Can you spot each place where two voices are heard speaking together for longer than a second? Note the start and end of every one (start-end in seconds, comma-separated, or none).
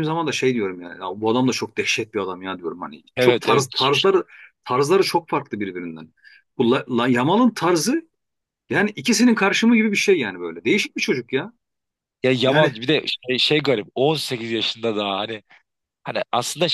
none